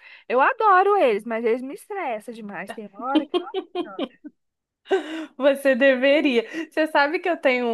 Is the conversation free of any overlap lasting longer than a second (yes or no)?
yes